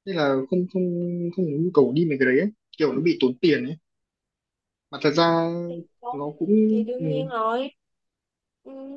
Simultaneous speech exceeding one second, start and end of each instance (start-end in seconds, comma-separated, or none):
none